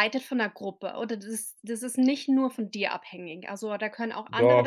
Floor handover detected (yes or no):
yes